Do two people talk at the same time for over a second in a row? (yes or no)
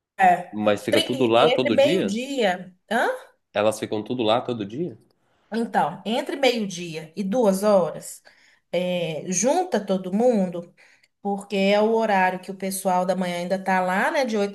yes